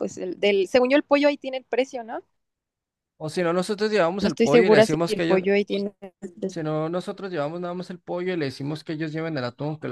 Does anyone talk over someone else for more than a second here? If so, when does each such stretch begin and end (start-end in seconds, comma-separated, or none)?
4.2-5.4